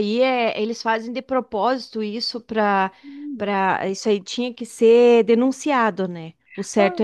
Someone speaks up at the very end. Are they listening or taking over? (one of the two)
taking over